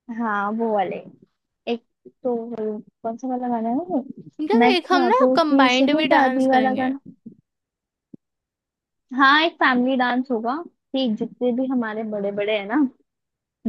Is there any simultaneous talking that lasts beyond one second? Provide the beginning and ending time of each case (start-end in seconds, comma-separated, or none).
4.6-6.9